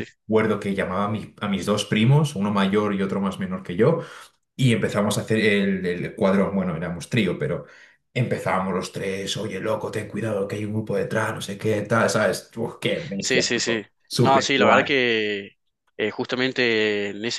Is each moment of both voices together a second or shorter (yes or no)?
no